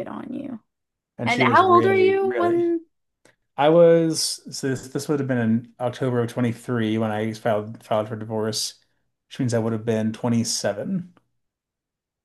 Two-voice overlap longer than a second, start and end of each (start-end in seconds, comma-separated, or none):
1.2-2.6